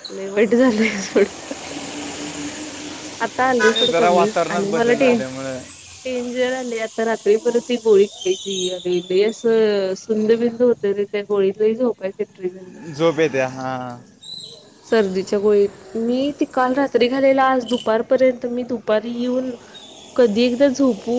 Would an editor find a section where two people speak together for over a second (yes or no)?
yes